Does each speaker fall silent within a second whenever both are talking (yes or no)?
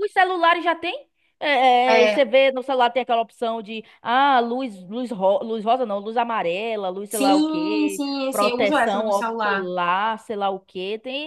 no